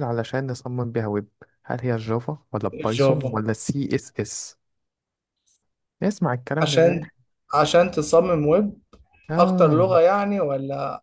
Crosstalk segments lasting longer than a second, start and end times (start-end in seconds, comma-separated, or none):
none